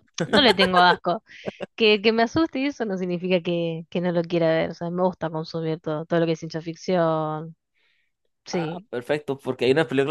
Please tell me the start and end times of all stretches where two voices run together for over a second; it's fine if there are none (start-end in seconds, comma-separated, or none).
none